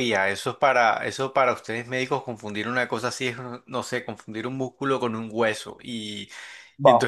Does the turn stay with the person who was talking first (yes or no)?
no